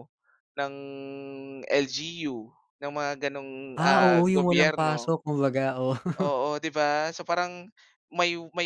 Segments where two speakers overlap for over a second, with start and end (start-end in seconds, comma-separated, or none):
3.8-5.1